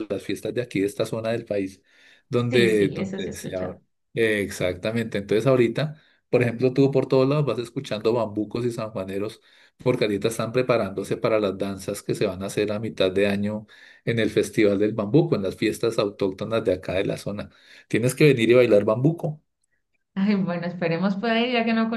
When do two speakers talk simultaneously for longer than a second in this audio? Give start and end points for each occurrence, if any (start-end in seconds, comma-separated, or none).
2.5-3.8